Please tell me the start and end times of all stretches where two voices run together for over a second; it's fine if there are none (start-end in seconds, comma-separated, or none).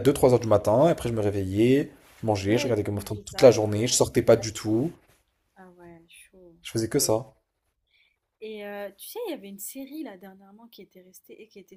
2.5-4.0